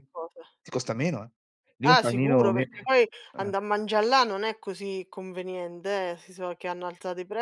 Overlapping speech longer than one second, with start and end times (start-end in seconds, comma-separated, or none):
1.8-3.5